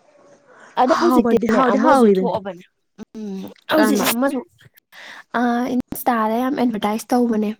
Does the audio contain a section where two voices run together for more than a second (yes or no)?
yes